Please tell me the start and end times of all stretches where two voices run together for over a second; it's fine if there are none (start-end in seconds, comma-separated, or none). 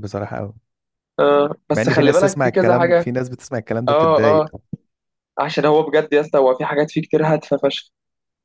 1.7-3.1